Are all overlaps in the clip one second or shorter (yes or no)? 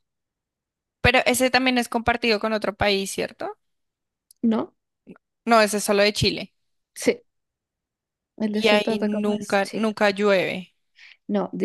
no